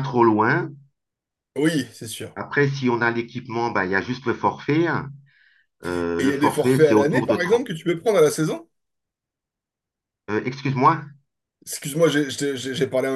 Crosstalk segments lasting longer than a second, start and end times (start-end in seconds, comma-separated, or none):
6.2-7.7